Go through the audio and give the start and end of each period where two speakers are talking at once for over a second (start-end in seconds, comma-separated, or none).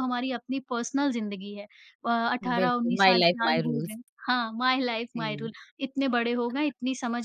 2.6-4.0